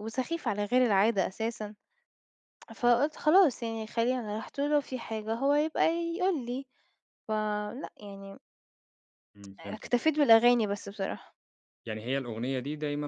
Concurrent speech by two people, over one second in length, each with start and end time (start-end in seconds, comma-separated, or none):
none